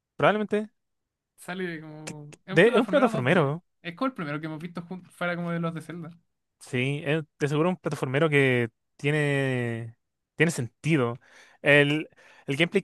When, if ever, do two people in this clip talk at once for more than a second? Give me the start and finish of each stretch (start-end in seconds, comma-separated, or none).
2.0-3.6